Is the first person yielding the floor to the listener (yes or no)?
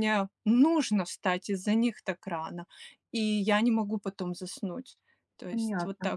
yes